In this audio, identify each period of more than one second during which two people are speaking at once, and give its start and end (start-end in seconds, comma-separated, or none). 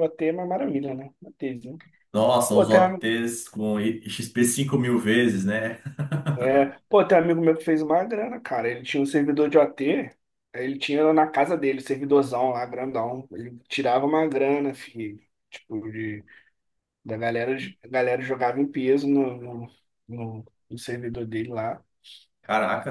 none